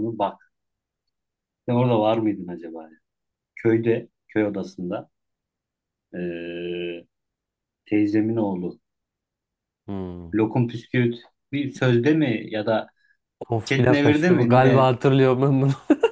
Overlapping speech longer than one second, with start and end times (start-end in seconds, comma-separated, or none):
13.6-14.9